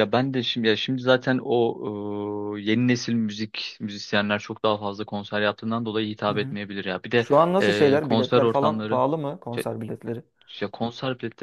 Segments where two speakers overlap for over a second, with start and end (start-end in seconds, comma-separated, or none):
7.2-9.0